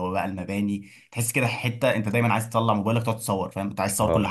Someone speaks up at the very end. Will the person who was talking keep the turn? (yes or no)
no